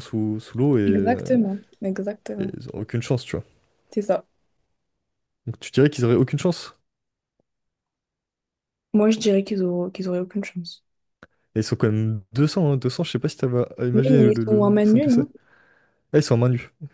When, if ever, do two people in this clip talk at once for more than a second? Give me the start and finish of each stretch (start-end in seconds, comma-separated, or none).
13.9-15.3